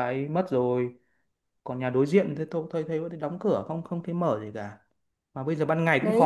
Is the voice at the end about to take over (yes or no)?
no